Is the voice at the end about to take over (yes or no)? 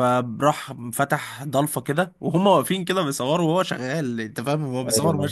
no